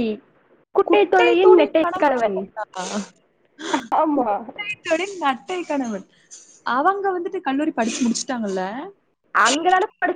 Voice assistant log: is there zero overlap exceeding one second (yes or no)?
no